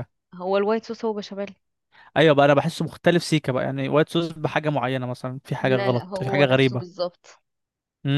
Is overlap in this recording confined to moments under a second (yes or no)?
no